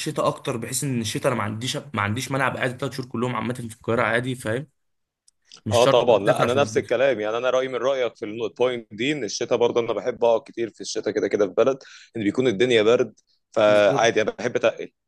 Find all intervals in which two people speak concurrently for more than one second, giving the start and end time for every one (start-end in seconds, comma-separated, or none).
5.7-7.0